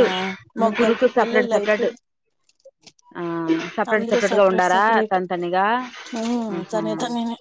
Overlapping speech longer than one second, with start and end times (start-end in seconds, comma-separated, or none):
0.7-1.9